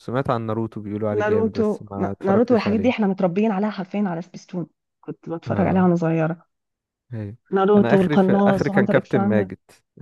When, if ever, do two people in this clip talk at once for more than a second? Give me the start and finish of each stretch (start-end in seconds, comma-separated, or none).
1.2-3.1, 7.8-9.5